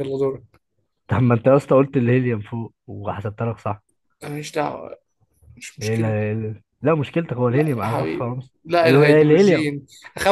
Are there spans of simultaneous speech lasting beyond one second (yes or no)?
yes